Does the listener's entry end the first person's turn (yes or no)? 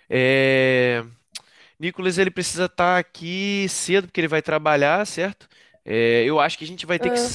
no